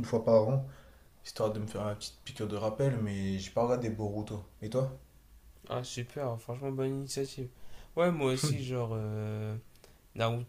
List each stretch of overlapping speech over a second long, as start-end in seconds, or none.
none